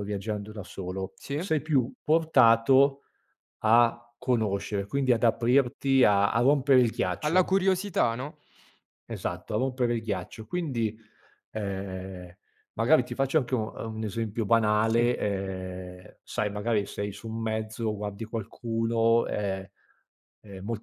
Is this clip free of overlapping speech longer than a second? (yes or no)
yes